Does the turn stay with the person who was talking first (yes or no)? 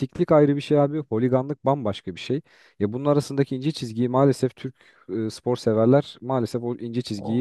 no